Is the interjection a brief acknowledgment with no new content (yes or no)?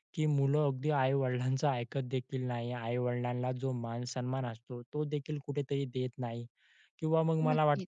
yes